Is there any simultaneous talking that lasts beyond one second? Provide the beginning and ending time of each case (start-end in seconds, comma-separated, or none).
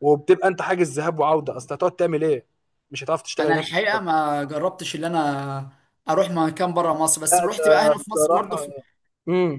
7.3-8.6